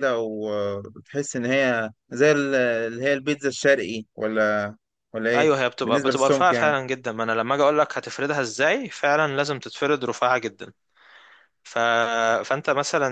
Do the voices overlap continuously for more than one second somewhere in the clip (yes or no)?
yes